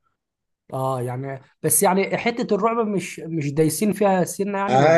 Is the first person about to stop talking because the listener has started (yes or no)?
yes